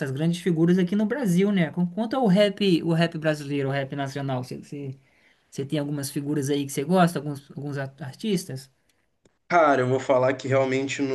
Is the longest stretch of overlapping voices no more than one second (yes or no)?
yes